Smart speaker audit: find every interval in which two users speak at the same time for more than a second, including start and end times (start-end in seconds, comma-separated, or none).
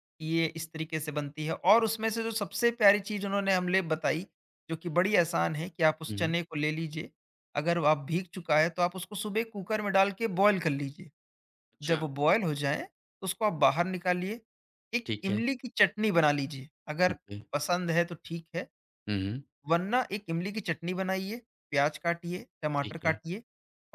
none